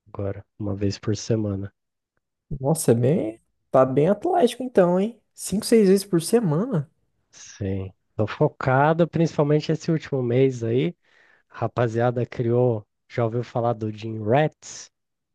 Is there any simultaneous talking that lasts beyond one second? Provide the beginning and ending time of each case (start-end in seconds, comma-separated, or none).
none